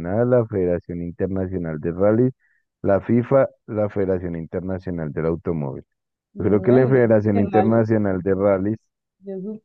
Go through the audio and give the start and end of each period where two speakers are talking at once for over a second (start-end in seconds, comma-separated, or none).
6.4-7.8